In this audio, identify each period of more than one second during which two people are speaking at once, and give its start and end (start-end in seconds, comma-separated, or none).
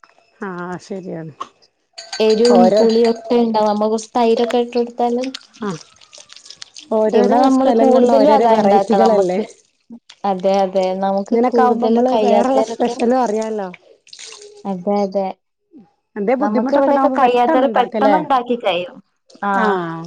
7.2-9.4, 11.3-12.9, 16.4-18.2